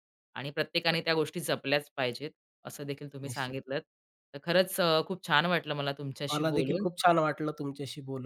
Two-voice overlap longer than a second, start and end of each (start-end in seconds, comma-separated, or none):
none